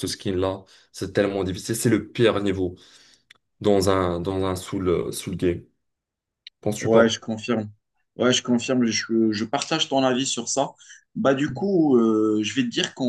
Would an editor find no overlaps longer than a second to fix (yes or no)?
yes